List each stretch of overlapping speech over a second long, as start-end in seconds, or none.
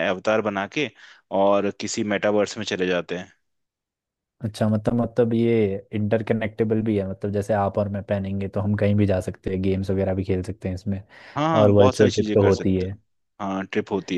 11.5-13.0